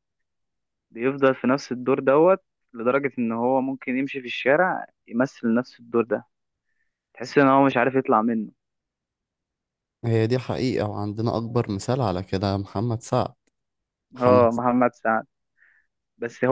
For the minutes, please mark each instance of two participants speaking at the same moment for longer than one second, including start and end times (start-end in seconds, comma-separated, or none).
none